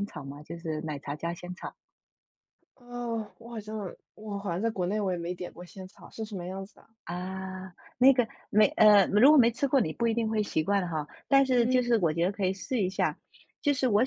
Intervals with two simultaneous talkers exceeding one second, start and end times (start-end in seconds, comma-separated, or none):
none